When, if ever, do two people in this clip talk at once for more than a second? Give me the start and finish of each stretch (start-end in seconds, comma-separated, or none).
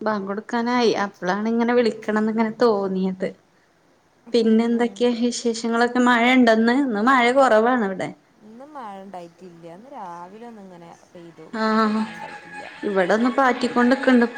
none